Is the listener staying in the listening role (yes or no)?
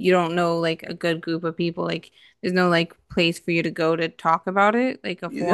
no